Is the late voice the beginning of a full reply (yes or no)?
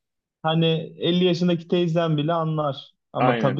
no